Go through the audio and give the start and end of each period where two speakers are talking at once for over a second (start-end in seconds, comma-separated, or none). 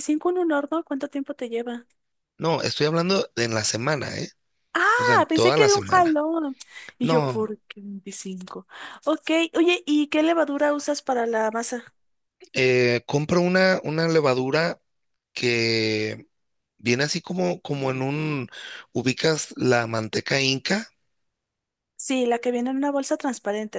5.0-6.2